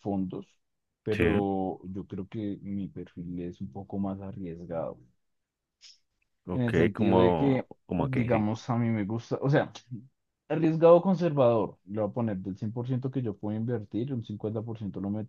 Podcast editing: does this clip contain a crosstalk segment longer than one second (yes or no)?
yes